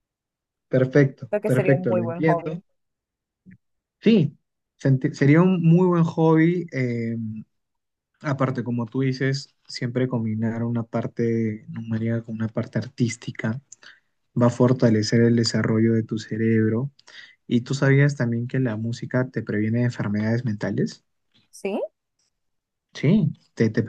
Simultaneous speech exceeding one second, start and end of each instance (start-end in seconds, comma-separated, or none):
1.3-2.6